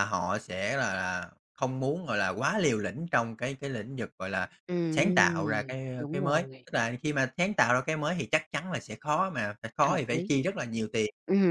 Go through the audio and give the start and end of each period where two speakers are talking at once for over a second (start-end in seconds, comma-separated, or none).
4.9-6.7